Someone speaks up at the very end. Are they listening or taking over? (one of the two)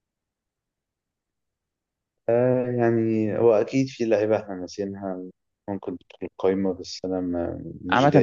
taking over